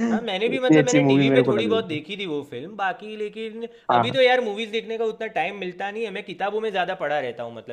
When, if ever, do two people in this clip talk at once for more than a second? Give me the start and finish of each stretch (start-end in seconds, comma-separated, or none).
0.5-2.0